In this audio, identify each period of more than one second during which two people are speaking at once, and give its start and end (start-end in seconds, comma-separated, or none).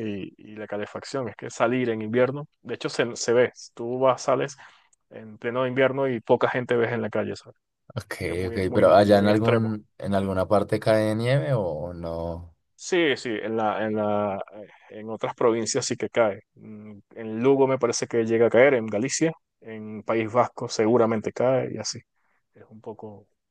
8.5-9.7